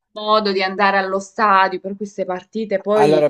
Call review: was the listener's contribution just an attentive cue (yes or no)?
no